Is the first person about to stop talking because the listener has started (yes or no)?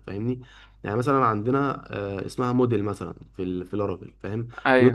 no